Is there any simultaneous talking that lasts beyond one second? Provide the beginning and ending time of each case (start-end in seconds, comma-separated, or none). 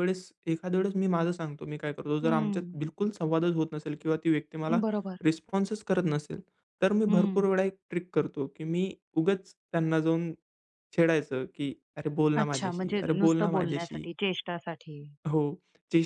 12.4-14.1